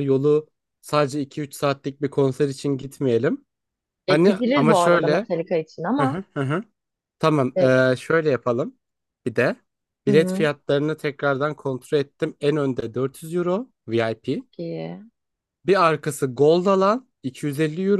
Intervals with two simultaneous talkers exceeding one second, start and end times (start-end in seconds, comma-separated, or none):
4.1-5.3